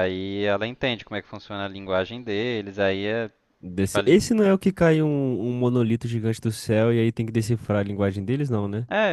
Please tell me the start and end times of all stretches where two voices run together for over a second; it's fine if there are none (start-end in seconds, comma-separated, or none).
none